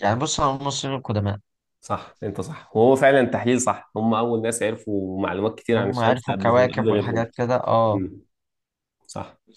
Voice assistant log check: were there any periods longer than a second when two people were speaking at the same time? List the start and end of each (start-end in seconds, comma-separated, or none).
5.8-7.3